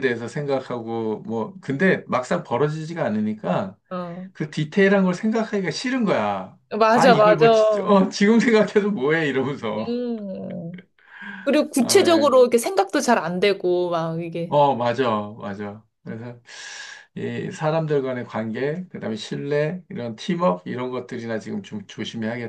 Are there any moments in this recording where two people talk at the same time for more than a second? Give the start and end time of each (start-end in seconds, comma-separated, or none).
6.7-8.0